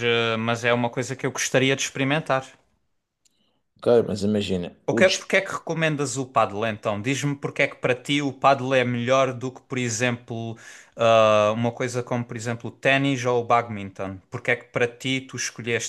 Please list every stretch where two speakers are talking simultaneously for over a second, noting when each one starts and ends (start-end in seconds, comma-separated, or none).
none